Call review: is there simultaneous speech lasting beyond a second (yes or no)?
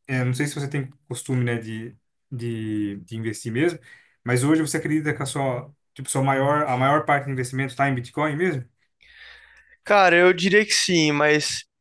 no